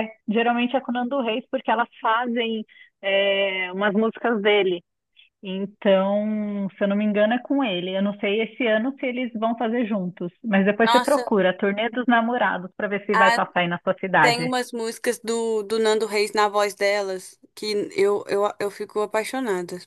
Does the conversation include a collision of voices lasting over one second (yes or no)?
no